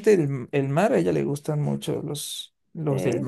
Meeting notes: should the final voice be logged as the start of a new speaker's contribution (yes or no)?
no